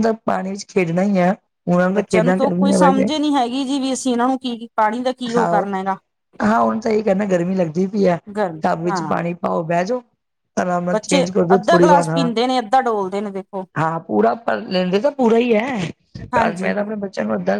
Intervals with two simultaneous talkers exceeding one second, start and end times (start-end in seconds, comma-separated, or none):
none